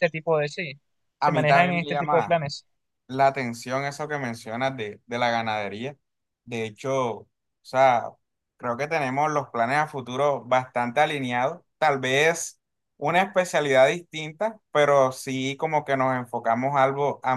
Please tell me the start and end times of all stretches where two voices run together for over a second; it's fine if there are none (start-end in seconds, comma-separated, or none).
1.2-2.4